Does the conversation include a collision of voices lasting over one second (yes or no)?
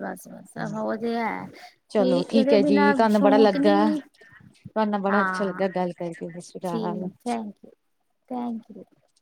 yes